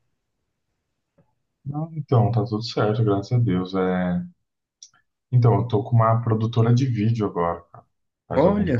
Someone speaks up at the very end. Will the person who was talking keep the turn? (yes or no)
no